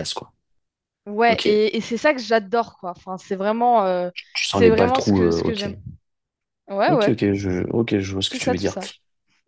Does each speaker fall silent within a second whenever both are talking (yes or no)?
no